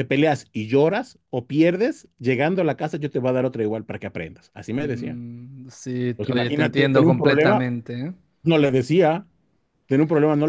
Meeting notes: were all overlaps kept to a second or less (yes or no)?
no